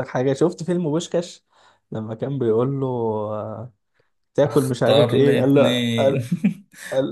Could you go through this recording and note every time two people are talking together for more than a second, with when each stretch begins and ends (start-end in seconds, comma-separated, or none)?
4.5-6.2